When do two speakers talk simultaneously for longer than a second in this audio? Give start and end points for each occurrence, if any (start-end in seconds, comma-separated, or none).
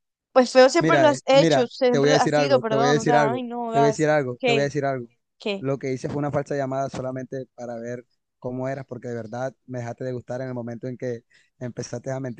0.8-4.7